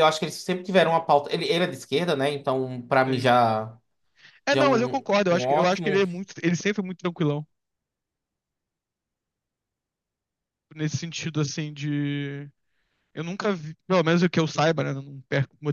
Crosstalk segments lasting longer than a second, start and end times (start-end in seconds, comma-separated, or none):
4.5-5.9